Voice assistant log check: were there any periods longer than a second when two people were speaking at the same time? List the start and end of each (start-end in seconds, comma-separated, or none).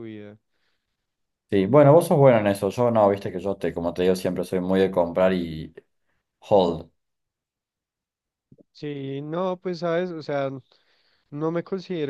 none